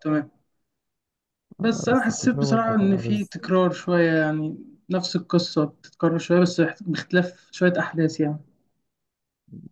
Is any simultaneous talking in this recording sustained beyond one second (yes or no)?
yes